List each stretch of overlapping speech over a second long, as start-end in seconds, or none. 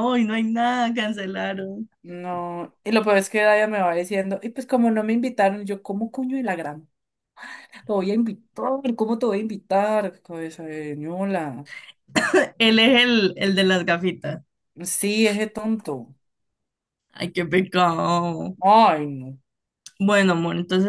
none